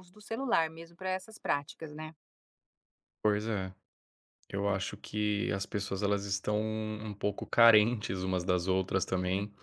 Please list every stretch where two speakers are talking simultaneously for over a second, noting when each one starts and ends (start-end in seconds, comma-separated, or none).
none